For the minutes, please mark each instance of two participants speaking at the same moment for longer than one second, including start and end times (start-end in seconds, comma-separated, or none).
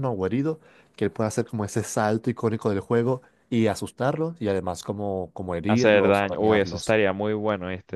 5.7-7.0